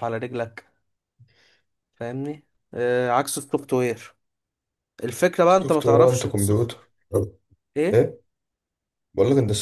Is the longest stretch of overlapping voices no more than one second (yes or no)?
no